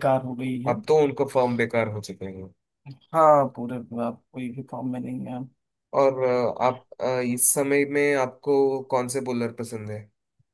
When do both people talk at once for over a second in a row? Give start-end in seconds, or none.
none